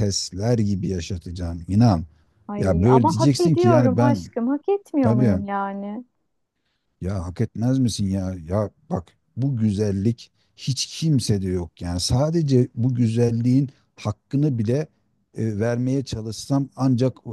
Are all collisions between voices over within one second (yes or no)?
no